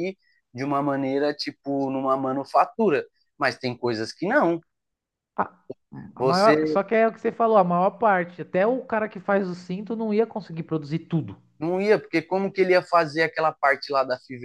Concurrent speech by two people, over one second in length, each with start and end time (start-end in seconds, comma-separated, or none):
none